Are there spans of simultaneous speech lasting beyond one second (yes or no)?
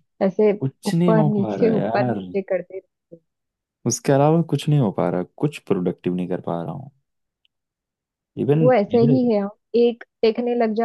yes